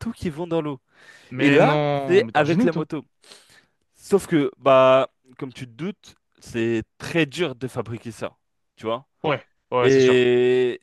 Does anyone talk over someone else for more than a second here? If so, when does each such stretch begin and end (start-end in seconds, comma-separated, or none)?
1.4-2.9